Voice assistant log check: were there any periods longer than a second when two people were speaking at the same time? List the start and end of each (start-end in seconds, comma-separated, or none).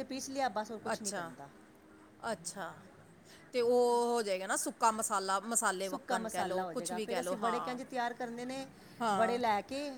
5.8-7.8